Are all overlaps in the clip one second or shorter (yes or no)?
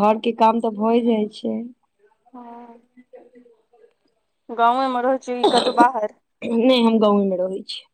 yes